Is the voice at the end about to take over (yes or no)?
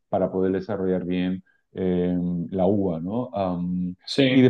no